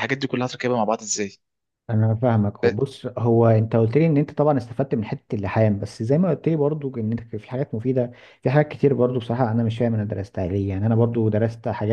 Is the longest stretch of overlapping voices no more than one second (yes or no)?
yes